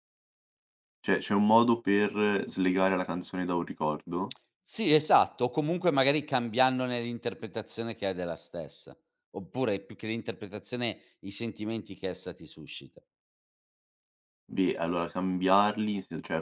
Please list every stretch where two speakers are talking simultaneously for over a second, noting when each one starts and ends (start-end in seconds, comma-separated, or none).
none